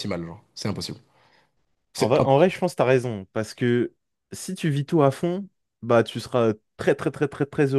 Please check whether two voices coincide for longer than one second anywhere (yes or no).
no